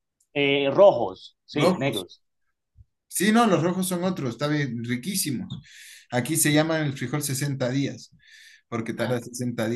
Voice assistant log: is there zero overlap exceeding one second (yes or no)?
yes